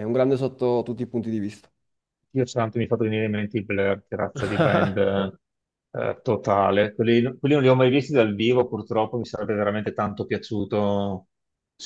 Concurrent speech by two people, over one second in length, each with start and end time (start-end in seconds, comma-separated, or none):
none